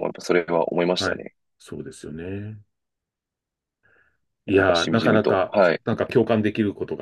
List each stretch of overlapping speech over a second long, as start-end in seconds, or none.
4.5-5.8